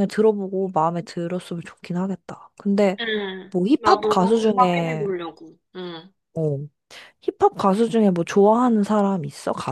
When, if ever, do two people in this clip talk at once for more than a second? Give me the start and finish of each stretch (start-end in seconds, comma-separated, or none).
3.5-5.1